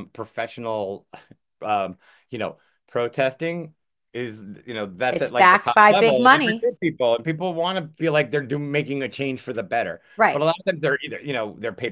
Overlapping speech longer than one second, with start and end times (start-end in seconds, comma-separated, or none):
5.1-6.7